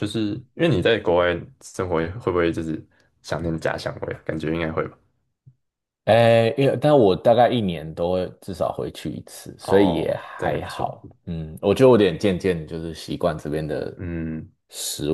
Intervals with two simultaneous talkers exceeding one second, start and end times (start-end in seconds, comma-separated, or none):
9.6-11.0